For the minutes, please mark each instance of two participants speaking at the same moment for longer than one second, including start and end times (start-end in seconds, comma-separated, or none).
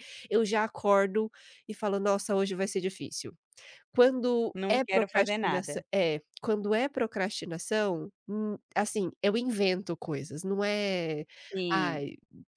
4.5-5.8